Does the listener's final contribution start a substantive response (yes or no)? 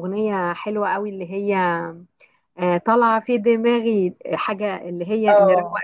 yes